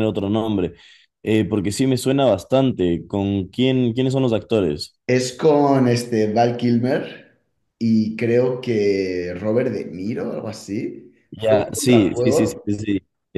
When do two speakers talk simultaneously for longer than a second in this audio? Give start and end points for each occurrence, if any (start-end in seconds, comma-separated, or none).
11.3-12.7